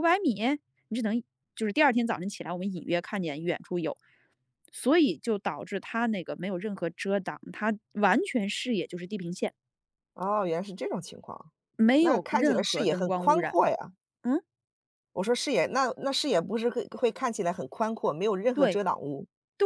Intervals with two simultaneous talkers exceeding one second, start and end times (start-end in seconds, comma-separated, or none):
12.0-13.6